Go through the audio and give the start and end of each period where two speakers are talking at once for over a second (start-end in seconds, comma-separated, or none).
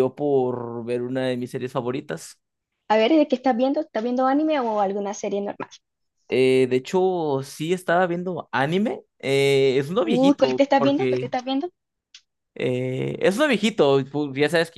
10.0-11.3